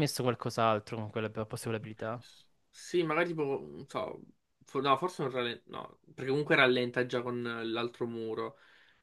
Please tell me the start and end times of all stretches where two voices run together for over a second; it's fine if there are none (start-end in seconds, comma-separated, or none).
none